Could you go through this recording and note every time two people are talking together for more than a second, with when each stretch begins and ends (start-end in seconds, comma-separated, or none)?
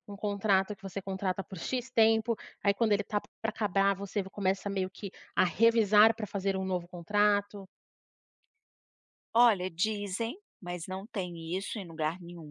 none